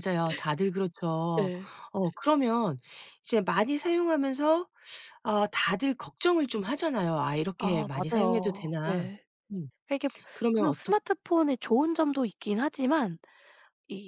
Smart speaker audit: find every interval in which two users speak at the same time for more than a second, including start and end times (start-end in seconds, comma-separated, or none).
7.6-9.1